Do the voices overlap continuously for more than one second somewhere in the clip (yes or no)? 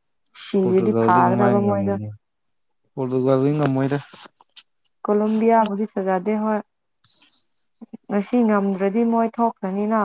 yes